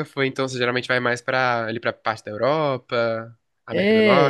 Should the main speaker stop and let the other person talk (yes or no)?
yes